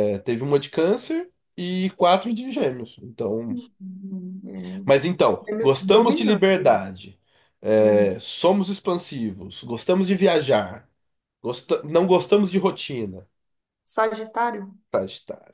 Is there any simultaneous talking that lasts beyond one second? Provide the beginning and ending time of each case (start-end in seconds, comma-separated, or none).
5.5-6.8